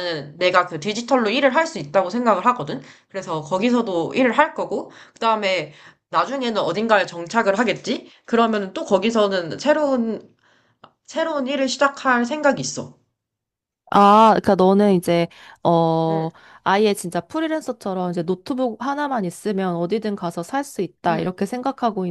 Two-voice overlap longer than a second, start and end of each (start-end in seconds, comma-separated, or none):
none